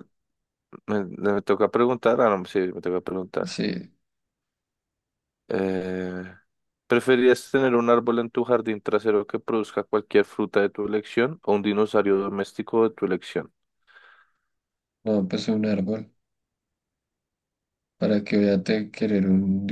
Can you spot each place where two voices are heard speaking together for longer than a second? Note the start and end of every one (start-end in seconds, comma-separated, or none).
none